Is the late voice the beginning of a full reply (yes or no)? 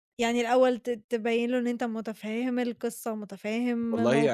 yes